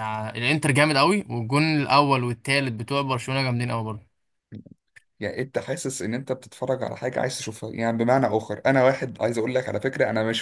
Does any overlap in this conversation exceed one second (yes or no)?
no